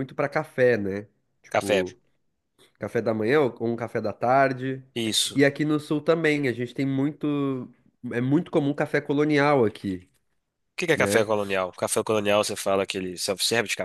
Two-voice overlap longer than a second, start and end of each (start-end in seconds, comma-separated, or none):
none